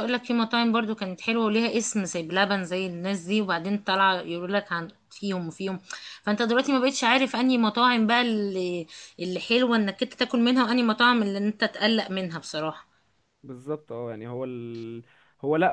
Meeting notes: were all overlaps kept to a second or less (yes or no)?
yes